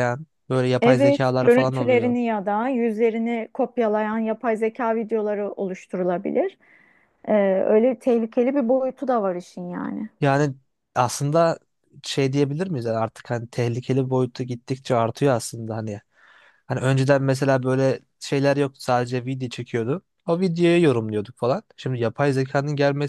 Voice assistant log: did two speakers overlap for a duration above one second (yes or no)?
yes